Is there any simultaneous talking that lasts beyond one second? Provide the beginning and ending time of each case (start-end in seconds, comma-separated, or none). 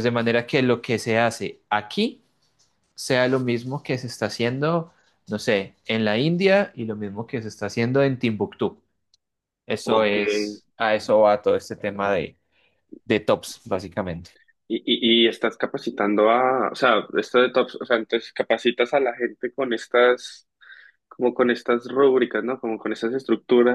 none